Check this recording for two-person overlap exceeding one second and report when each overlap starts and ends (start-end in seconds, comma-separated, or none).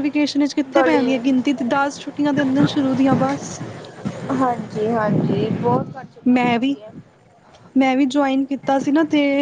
none